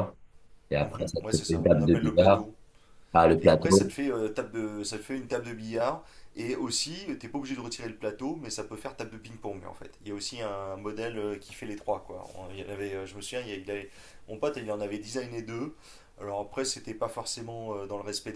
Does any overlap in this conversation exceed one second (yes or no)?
yes